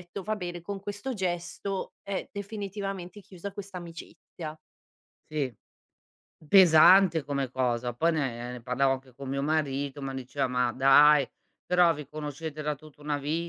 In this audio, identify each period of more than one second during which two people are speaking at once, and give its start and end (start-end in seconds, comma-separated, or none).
none